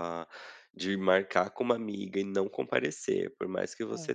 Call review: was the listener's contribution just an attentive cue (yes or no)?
yes